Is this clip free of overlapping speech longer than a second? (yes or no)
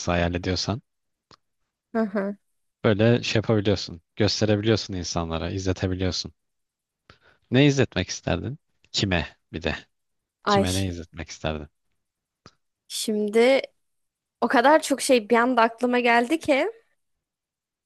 yes